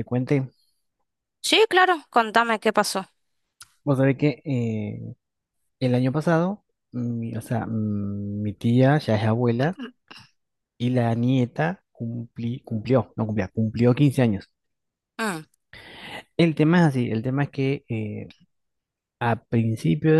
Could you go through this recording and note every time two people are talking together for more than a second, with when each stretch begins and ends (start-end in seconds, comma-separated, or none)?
none